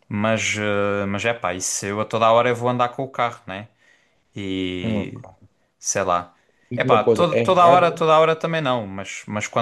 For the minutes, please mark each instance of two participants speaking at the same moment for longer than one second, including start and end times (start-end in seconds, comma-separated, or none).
6.8-8.1